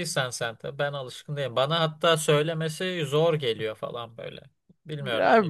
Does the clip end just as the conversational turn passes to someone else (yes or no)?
yes